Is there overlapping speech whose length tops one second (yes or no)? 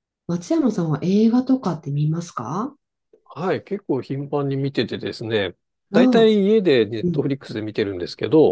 no